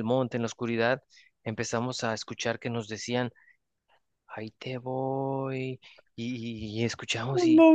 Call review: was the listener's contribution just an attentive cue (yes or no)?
yes